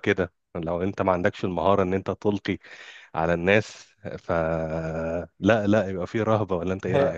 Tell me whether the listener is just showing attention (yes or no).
no